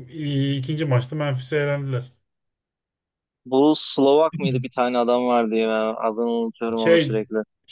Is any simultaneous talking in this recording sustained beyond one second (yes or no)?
no